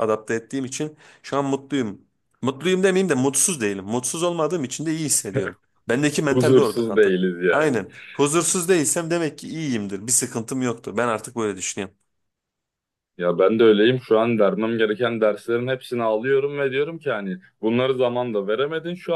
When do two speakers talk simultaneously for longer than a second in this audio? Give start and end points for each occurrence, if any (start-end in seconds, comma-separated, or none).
6.3-7.7